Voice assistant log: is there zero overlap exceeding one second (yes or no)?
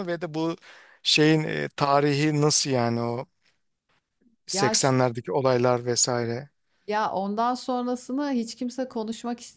yes